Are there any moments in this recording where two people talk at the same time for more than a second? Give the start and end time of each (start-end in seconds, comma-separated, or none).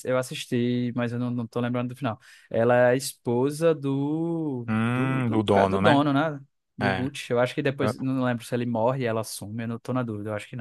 4.7-6.0